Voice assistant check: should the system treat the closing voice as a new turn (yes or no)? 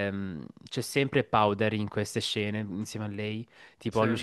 no